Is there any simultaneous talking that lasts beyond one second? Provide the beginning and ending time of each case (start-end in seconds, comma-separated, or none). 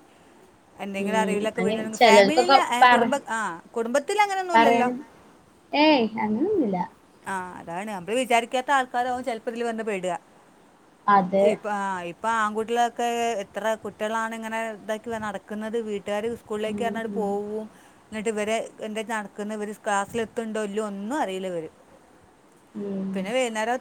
1.0-3.0